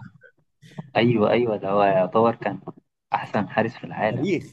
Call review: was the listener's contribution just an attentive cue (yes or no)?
no